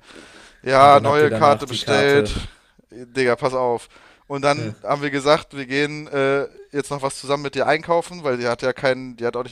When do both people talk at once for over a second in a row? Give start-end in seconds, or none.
0.8-2.3